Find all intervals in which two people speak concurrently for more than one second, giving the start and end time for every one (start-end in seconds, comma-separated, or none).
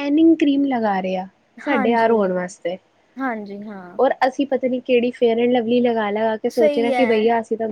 none